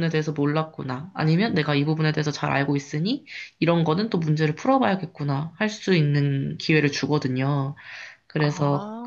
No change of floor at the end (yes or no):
yes